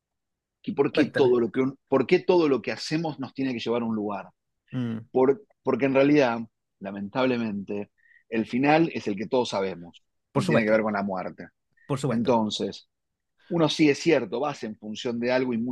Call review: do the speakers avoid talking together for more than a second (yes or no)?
yes